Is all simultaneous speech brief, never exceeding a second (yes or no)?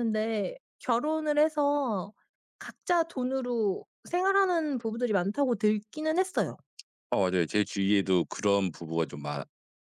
yes